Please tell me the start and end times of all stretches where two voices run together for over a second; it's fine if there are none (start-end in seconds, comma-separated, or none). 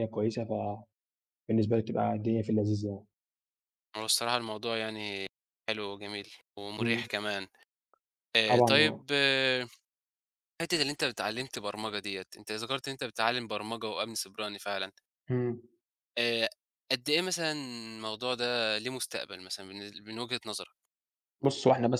none